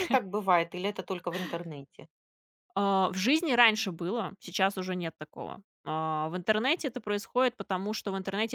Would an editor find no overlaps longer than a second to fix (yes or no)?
yes